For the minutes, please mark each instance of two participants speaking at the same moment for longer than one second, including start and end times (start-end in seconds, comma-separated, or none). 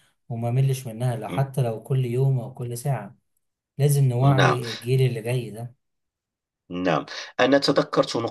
none